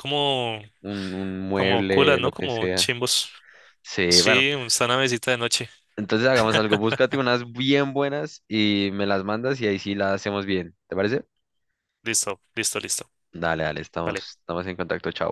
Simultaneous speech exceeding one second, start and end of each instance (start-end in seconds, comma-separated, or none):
1.5-2.9